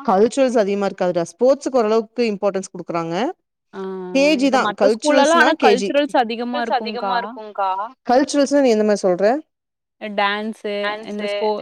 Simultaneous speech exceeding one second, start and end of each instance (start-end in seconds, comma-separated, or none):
4.5-7.2